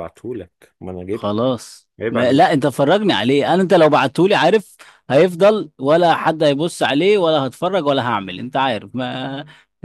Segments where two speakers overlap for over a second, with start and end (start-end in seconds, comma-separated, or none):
none